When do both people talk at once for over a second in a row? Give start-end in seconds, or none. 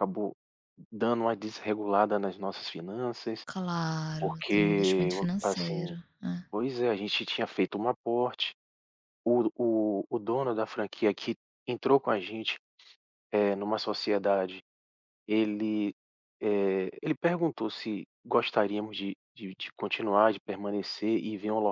4.2-6.0